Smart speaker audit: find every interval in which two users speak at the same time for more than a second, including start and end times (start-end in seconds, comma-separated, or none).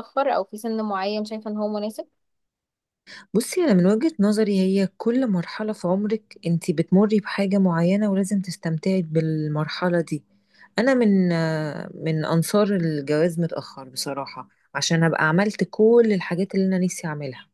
none